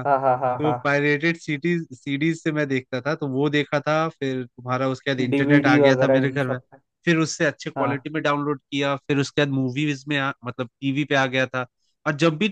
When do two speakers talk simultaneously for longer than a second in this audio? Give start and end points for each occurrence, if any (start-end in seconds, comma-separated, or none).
5.3-6.6